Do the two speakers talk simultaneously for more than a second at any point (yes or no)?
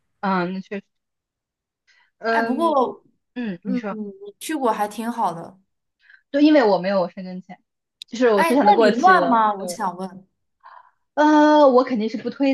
yes